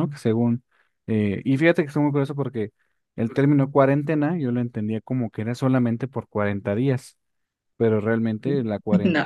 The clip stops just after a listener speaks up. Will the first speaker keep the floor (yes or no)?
yes